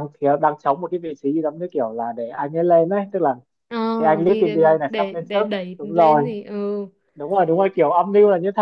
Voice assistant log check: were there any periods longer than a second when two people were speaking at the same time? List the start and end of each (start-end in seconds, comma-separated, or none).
4.3-6.3